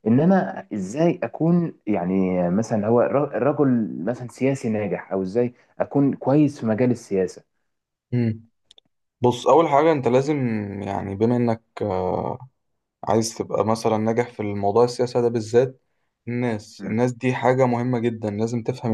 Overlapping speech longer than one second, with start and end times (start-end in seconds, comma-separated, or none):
none